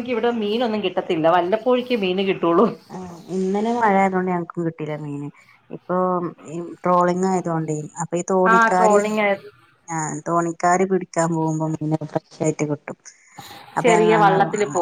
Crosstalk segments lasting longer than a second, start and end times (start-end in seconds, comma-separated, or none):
none